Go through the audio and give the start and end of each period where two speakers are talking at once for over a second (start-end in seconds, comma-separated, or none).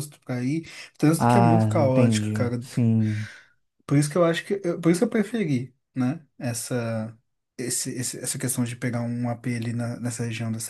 1.2-2.6